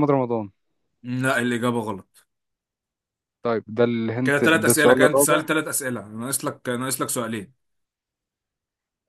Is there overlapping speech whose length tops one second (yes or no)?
yes